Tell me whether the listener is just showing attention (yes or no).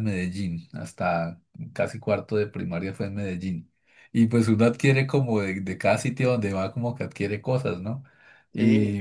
yes